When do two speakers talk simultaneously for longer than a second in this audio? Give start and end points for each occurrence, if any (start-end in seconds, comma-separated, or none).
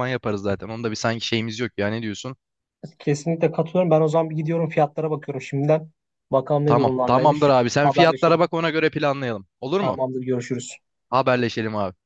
6.7-8.4